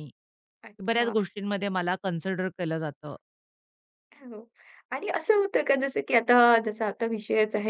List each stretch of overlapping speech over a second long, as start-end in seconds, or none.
none